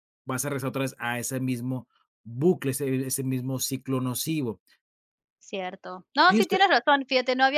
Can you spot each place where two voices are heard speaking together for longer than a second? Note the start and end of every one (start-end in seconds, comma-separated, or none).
none